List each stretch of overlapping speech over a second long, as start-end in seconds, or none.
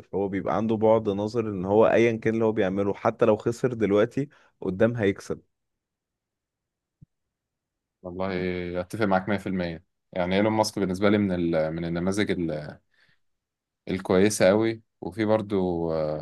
none